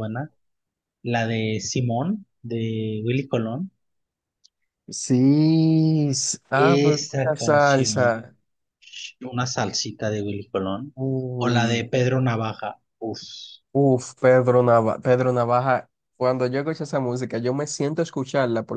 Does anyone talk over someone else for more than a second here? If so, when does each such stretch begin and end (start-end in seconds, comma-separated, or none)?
6.5-8.3